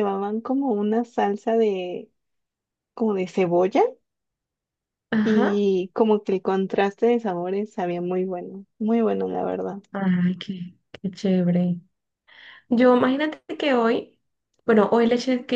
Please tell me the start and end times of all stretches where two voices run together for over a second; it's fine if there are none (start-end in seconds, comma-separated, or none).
none